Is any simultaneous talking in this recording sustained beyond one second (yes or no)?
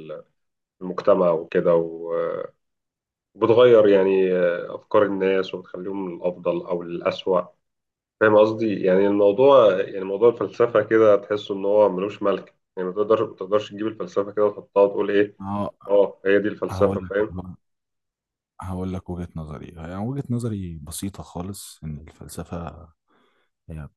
no